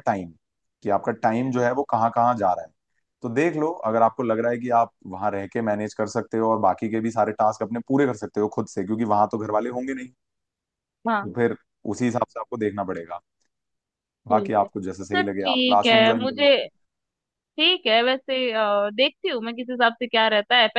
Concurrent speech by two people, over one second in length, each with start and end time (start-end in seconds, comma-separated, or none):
14.3-16.5